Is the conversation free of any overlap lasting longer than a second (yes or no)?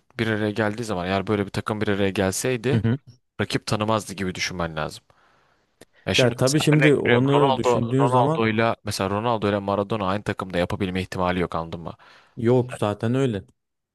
no